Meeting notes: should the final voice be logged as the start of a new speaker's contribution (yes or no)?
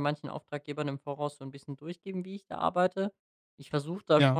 no